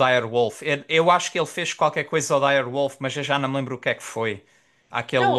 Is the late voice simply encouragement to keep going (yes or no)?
no